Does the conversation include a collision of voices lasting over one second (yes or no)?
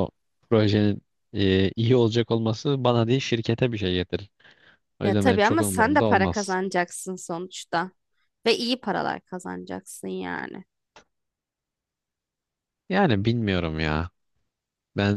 yes